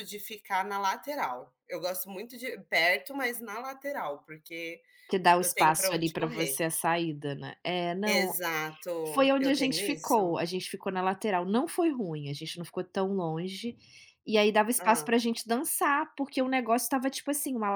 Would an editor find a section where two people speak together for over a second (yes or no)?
yes